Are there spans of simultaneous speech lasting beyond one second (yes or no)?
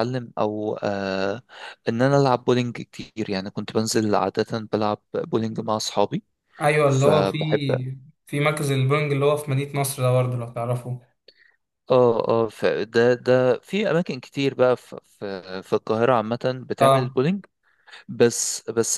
no